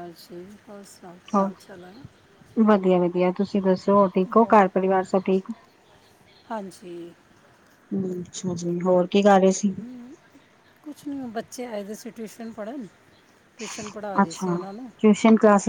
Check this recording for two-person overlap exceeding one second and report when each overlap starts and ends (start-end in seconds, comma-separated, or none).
none